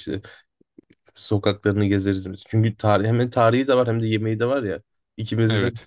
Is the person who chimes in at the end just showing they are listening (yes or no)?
yes